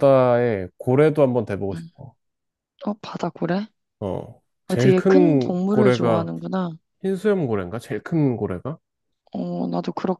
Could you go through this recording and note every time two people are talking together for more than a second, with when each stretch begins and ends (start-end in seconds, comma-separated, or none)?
4.7-6.3